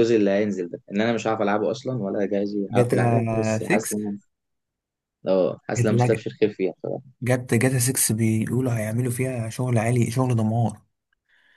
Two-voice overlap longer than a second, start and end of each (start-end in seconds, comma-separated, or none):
2.7-4.0